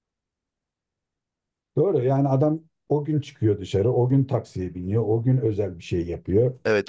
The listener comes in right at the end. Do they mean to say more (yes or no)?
yes